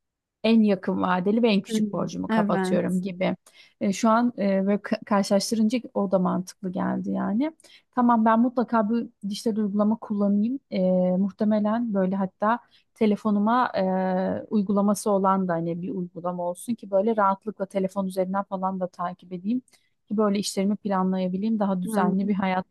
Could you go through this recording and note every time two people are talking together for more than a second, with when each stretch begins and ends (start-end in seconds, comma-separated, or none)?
1.7-3.0